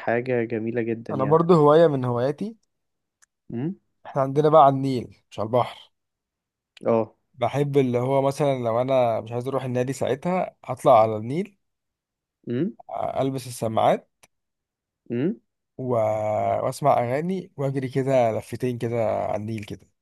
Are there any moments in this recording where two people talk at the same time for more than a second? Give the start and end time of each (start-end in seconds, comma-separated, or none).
none